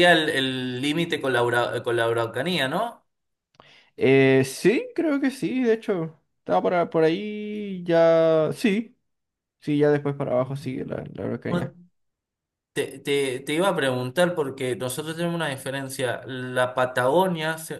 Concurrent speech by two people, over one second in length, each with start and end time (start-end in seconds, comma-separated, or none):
none